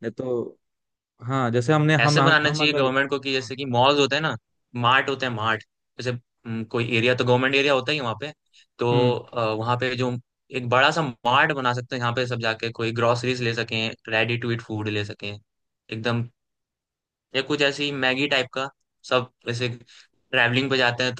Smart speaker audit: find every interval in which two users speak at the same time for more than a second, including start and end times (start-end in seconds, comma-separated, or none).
2.0-3.5